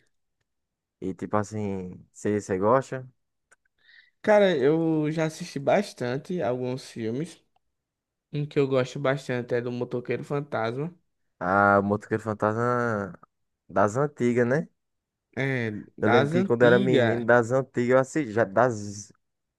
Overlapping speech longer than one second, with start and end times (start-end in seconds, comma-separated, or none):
16.0-17.2